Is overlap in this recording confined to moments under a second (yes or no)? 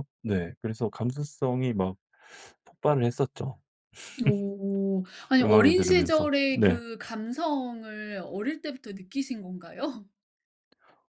no